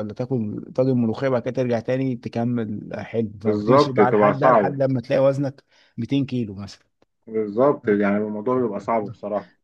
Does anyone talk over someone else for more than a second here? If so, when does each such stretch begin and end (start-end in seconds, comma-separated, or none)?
3.5-4.8